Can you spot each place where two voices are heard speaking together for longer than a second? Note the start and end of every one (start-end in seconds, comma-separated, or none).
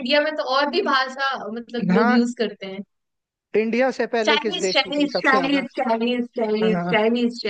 4.3-5.6